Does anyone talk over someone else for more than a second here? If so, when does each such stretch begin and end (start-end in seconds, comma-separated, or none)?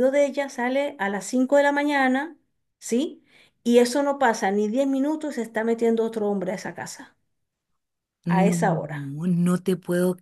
none